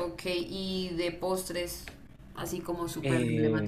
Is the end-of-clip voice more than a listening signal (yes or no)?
yes